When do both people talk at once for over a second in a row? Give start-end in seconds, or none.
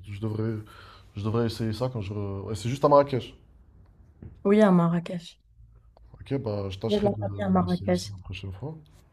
6.9-8.1